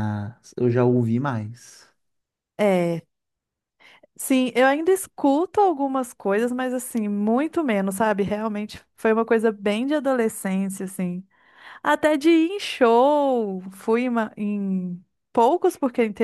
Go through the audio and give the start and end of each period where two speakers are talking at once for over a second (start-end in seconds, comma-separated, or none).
none